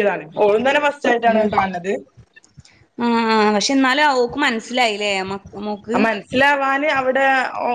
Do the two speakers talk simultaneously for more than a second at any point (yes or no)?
no